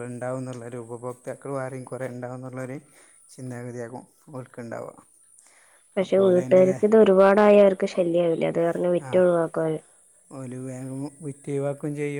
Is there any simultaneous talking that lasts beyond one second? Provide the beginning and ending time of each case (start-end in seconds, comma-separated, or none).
none